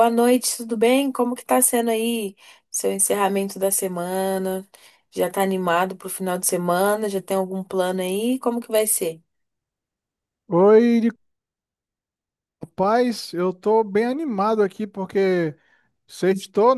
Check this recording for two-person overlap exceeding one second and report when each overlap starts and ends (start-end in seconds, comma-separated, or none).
none